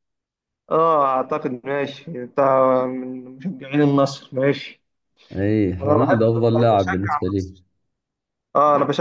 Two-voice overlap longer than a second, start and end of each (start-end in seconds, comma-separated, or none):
5.8-7.5